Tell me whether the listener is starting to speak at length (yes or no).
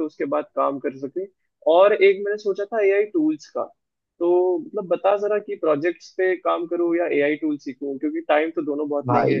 no